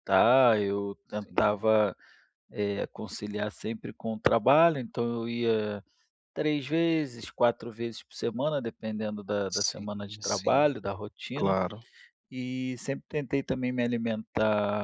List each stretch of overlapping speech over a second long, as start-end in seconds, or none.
9.5-10.7